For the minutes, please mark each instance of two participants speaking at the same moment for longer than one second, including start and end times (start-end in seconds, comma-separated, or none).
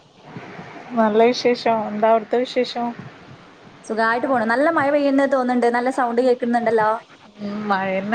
none